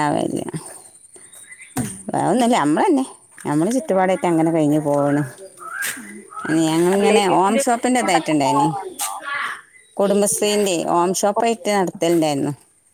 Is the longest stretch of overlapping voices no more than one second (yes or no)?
no